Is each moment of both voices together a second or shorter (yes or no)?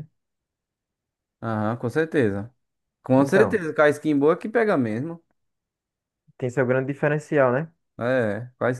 yes